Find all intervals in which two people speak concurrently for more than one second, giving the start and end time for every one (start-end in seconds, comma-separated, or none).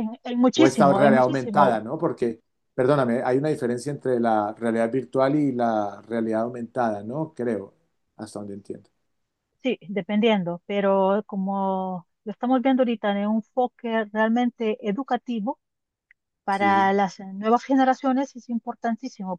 0.5-1.8